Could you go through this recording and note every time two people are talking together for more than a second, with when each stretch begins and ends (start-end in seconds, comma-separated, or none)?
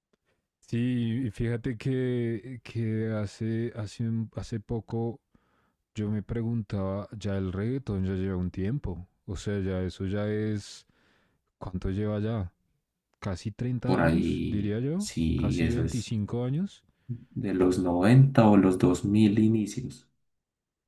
13.8-16.1